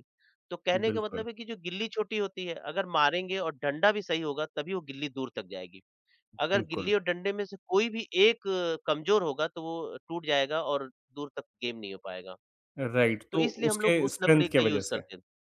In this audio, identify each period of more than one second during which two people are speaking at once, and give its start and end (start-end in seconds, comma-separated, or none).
13.3-15.0